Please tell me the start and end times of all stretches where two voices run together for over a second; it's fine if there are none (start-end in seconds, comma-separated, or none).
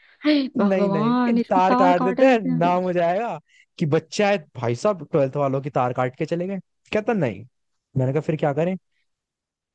0.6-2.8